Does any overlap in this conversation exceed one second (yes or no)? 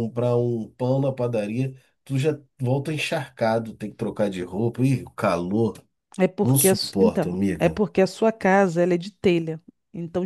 yes